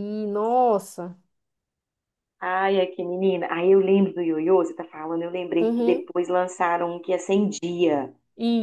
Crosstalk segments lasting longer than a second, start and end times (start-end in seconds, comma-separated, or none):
none